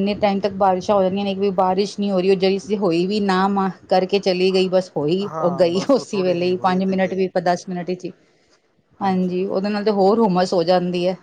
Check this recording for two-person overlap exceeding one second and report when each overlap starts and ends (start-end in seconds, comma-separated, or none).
5.3-7.3